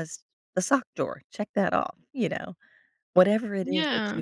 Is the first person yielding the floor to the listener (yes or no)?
no